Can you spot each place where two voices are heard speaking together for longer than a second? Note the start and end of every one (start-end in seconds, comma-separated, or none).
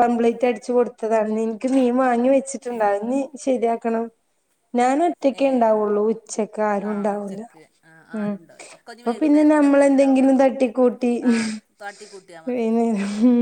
9.0-10.4